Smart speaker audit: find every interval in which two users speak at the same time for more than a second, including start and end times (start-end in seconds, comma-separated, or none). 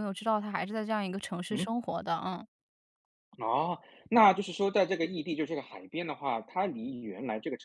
none